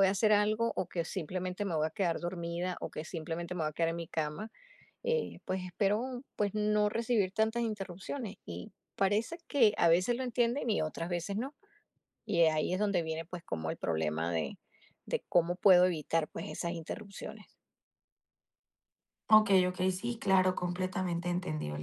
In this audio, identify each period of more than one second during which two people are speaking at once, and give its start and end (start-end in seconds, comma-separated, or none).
none